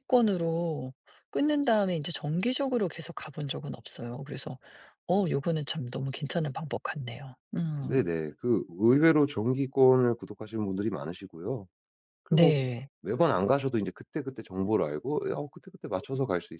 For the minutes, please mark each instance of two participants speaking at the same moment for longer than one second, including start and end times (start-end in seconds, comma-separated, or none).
none